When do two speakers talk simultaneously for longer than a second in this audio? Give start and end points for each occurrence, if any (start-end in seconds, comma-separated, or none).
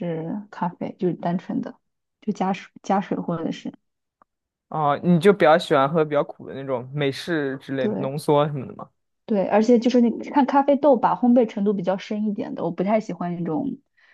none